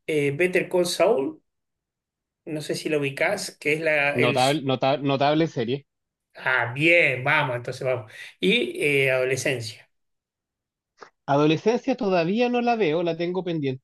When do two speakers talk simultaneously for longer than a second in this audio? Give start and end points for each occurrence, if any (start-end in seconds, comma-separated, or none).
none